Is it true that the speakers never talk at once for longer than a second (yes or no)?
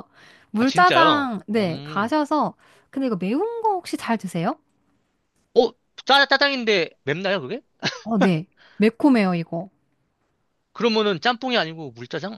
no